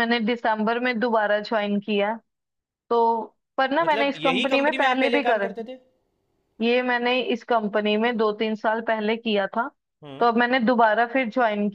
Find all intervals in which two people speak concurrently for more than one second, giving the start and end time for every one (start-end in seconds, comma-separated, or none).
3.8-5.5